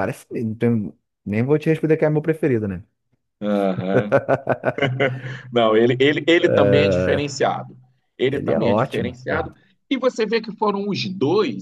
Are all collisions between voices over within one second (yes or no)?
no